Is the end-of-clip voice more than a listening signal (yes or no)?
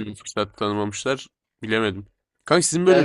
no